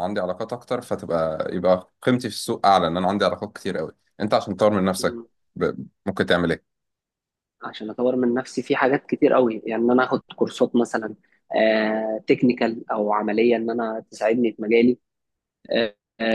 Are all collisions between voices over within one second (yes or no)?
yes